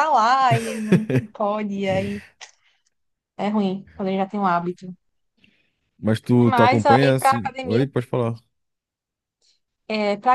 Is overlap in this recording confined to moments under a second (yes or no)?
no